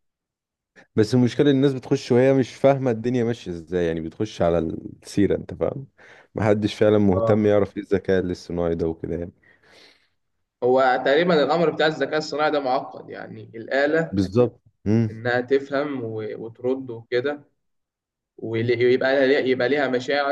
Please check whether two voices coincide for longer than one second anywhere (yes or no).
no